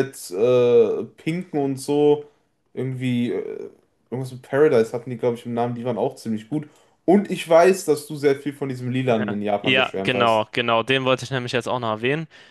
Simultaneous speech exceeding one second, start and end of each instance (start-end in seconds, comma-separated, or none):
9.1-10.4